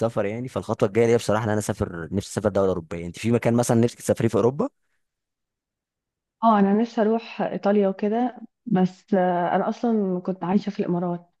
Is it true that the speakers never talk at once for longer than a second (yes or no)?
yes